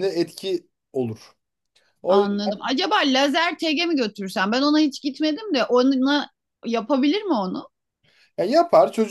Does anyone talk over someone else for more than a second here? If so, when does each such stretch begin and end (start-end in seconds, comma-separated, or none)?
none